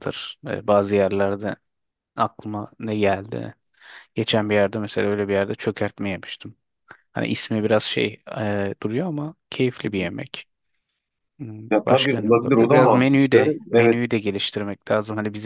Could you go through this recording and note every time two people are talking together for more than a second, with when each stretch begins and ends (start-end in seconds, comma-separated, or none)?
11.7-14.0